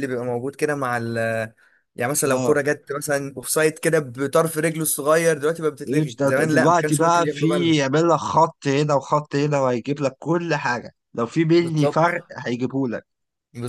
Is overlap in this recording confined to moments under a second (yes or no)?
no